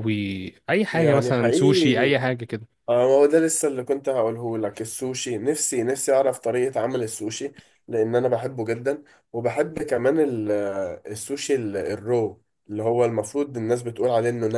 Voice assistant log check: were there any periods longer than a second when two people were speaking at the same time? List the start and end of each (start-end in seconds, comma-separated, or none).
0.9-2.1